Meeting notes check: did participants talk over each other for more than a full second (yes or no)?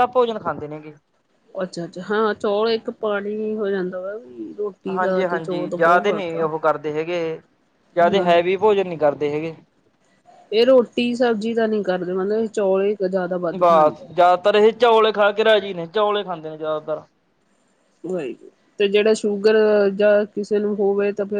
yes